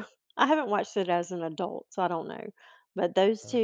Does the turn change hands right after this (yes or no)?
no